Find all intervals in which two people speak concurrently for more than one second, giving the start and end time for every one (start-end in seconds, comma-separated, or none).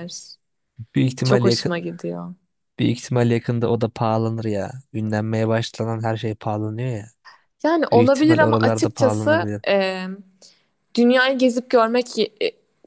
7.9-9.5